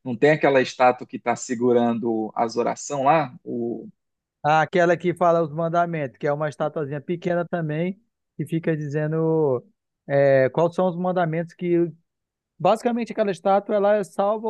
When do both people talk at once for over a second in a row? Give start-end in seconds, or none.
none